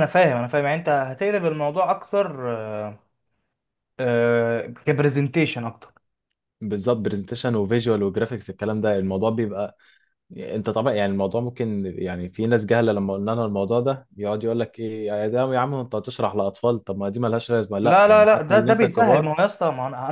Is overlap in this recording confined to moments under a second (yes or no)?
no